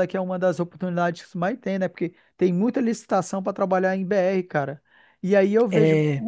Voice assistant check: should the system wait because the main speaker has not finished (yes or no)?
yes